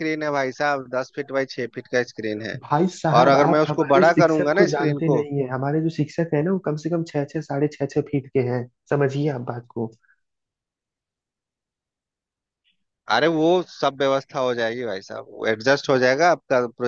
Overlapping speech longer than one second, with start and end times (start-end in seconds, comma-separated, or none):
3.2-5.2